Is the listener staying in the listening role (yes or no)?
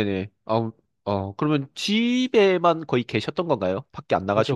no